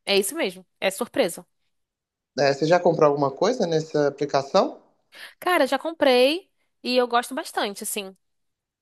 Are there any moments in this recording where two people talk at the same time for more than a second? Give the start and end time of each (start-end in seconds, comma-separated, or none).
none